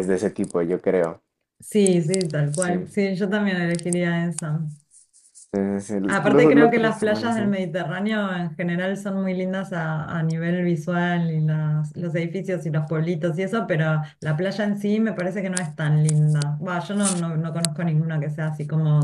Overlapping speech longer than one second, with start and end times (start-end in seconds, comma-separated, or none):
6.1-7.6